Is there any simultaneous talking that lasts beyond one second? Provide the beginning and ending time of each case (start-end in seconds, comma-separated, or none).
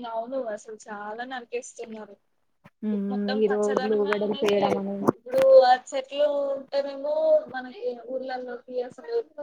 3.1-4.8